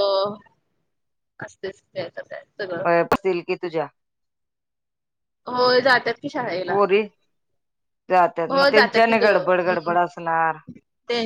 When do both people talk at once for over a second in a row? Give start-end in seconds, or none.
8.5-9.9